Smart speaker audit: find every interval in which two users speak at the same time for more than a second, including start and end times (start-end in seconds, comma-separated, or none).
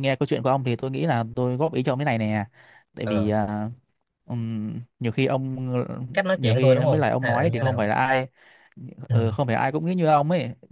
6.3-7.8